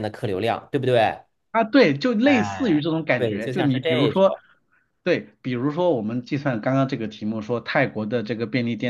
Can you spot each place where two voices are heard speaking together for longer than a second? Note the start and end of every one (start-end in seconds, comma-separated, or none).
2.2-4.4